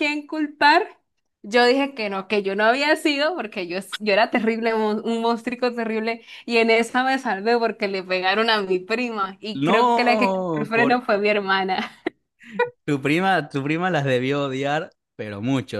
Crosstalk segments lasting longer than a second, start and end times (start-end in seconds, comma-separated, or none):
9.6-11.0